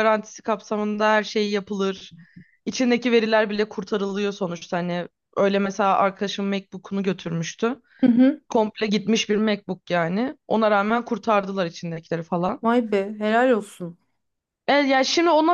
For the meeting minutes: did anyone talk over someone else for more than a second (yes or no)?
no